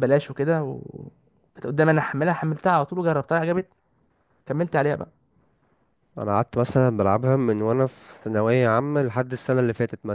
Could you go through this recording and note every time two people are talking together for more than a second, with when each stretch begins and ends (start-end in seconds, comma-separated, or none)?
none